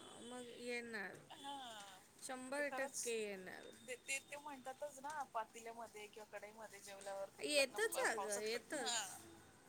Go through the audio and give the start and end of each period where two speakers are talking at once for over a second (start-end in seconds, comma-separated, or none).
7.4-8.9